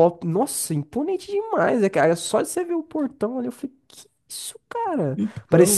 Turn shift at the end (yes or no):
no